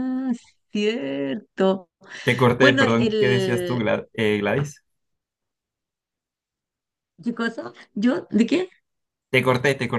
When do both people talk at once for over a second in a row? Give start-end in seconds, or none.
2.6-3.8